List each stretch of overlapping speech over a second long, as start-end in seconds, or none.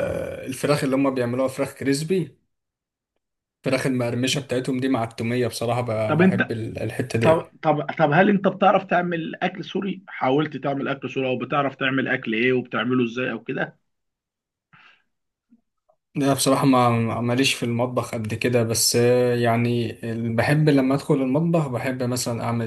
none